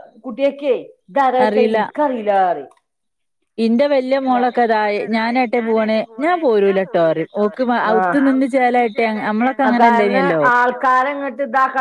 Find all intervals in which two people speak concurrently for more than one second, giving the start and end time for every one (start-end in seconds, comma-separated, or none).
8.5-10.4